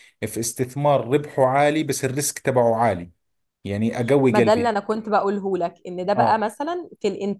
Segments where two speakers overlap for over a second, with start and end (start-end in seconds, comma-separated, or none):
none